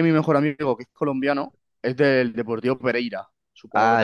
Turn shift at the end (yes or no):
yes